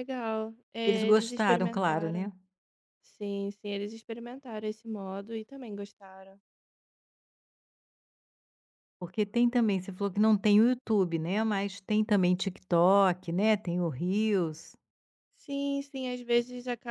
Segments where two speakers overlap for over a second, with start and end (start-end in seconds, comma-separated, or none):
0.8-2.3